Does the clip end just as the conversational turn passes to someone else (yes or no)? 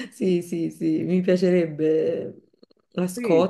yes